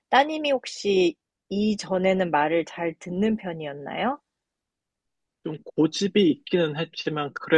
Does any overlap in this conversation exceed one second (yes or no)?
no